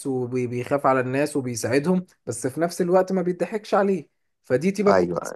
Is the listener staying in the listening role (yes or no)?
yes